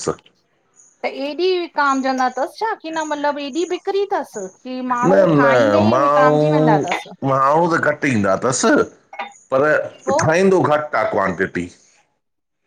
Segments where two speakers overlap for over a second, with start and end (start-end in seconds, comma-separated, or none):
5.0-7.1